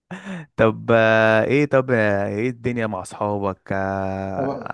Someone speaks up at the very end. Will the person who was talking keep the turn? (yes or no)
yes